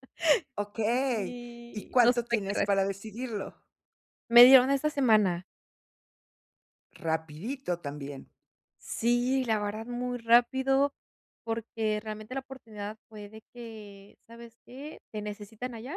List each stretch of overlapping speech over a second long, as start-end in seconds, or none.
1.1-2.7